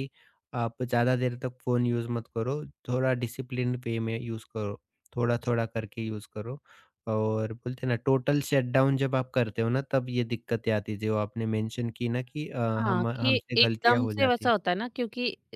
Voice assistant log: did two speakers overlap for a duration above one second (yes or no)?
yes